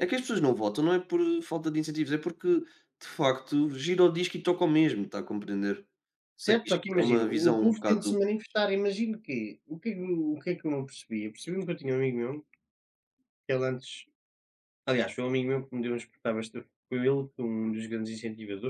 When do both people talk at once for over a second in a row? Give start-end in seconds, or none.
6.4-8.2